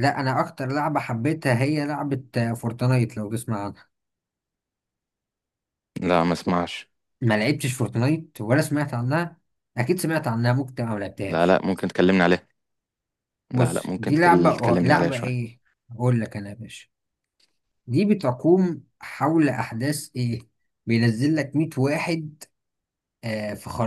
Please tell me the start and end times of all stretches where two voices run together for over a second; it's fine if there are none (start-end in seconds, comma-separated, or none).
13.6-15.4